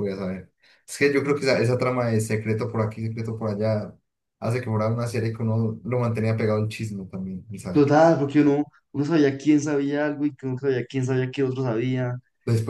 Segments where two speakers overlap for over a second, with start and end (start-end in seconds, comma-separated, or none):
none